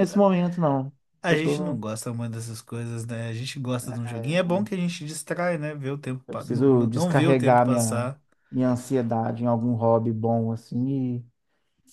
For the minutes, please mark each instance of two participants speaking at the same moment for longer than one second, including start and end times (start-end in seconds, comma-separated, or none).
6.3-8.1